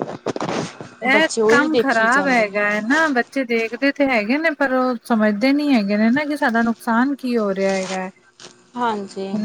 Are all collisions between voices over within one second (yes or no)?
no